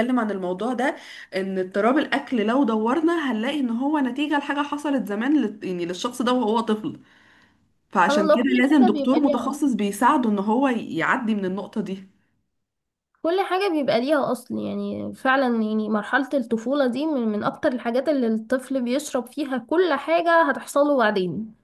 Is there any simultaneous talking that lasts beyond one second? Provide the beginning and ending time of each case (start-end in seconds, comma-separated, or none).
8.0-9.6